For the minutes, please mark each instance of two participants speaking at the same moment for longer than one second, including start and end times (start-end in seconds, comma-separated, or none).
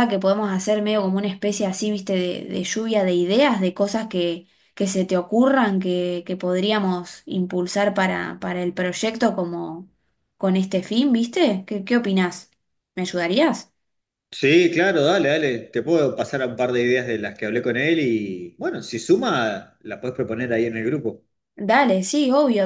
none